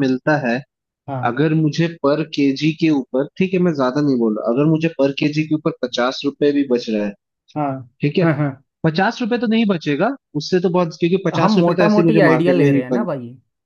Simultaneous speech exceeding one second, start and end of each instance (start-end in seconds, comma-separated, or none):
11.4-13.1